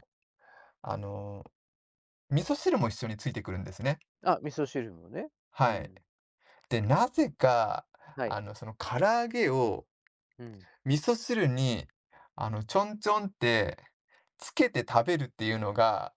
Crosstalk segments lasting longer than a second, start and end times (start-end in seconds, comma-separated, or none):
none